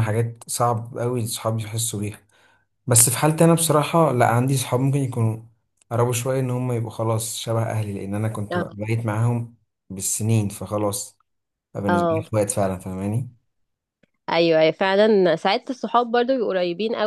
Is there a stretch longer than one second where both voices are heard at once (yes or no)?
no